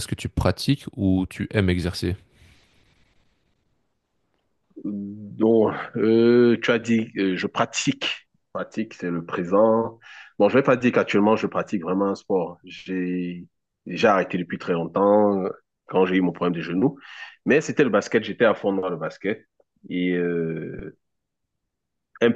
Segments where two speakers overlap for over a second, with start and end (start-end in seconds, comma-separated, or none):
none